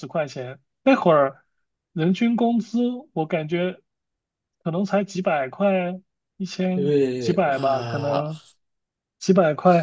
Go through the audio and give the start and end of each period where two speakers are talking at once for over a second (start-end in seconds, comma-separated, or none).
6.7-8.3